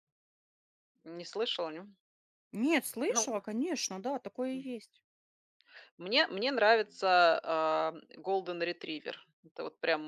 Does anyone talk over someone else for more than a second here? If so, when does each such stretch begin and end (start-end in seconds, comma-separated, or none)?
none